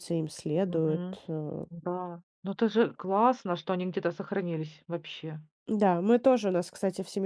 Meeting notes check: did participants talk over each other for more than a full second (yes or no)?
no